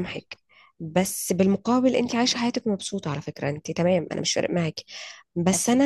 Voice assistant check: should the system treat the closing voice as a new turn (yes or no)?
no